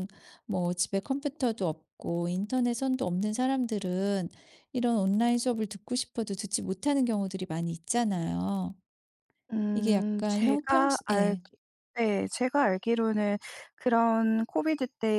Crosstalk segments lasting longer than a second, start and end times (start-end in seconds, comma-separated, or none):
9.7-11.4